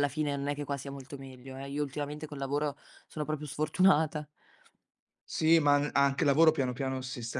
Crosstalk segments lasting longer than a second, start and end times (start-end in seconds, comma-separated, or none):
none